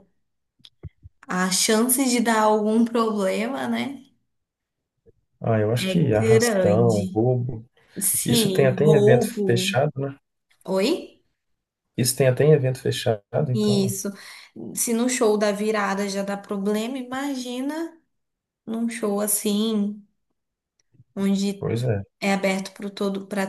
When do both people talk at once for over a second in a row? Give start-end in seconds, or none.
5.8-7.2, 8.2-9.8